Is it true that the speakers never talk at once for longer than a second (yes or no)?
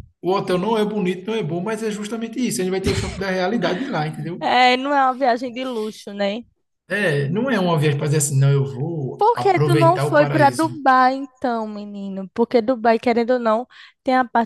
no